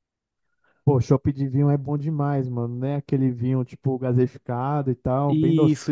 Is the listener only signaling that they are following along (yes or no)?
no